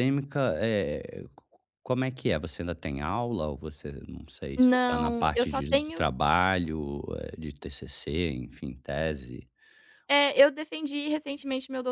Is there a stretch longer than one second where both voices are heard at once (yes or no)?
yes